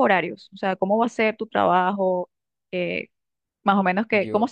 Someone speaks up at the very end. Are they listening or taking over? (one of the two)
listening